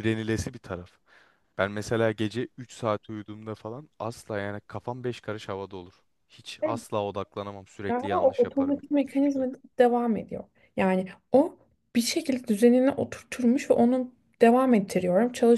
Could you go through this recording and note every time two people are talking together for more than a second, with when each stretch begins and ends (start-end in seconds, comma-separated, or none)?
7.9-9.5